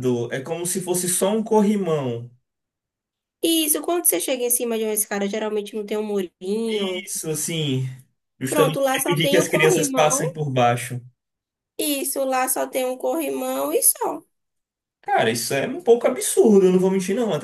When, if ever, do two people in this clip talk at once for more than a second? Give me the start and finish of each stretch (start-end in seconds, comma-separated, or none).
8.5-10.3